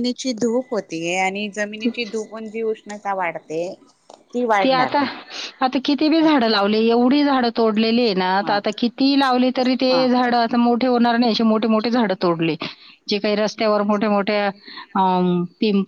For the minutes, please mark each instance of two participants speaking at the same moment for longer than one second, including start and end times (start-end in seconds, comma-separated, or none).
none